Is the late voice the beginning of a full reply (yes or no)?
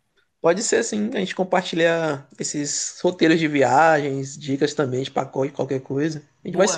yes